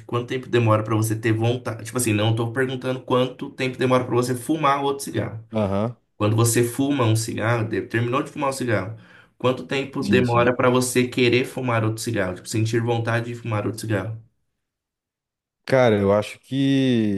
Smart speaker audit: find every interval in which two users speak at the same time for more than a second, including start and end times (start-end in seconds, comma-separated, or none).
none